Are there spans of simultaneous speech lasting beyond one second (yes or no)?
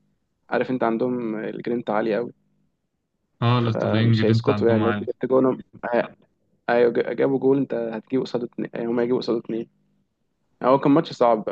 yes